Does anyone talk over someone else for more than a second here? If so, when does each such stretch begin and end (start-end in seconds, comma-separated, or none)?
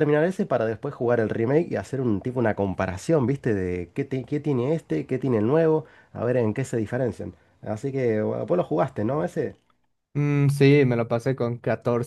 none